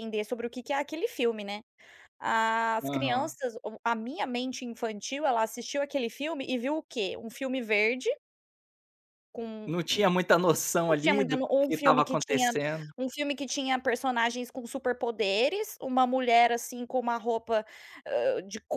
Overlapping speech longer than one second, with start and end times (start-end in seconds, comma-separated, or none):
10.9-12.5